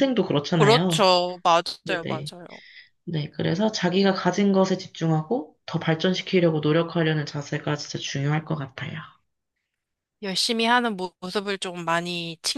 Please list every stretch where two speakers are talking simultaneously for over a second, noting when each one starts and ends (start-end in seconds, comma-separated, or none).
none